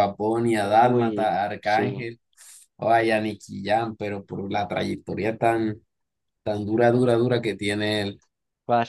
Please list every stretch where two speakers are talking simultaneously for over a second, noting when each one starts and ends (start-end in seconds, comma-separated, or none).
0.6-2.1